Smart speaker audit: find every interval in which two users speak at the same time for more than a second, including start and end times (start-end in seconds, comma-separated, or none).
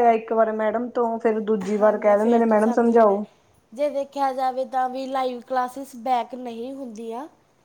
1.8-3.2